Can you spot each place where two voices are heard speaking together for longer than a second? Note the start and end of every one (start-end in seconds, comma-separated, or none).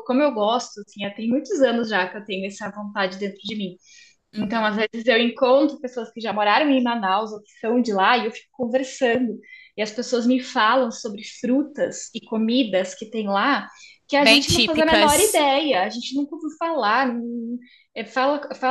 14.2-15.4